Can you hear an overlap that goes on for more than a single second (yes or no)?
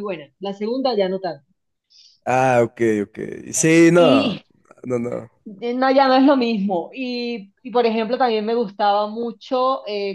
no